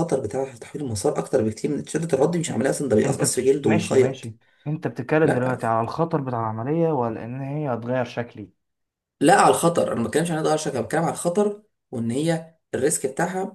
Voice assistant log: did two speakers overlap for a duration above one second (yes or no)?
yes